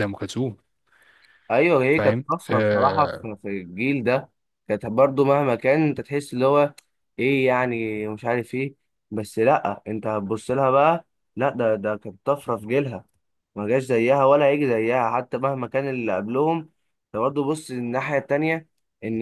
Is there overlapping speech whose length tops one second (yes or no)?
yes